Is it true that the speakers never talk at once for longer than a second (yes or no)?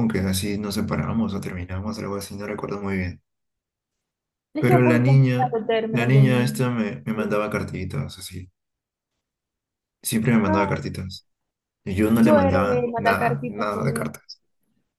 no